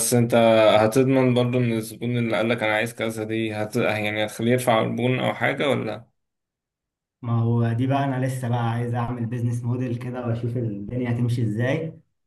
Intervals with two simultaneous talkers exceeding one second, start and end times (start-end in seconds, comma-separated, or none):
none